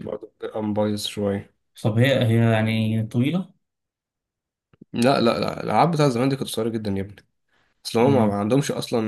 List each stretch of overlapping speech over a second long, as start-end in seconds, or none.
none